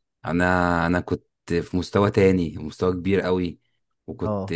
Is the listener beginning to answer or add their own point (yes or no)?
no